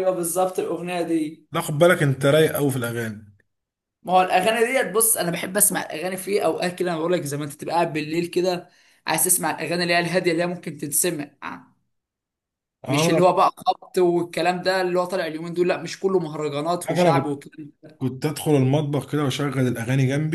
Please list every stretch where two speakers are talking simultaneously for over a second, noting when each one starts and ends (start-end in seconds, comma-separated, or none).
none